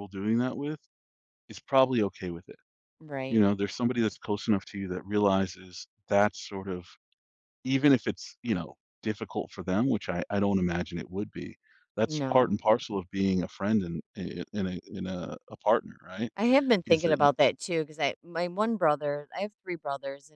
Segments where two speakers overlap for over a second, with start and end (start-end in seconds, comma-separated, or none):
none